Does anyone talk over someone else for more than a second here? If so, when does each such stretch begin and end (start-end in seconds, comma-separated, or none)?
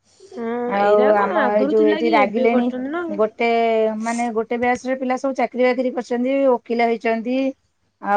0.8-3.1